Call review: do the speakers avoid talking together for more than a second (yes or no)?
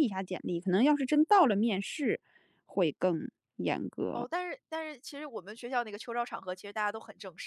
yes